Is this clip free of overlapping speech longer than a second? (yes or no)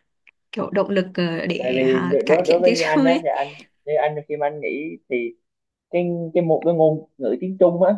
no